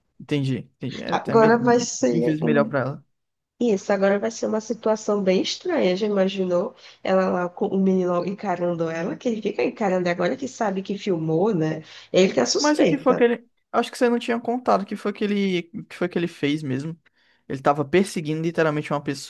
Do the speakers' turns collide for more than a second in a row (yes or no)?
yes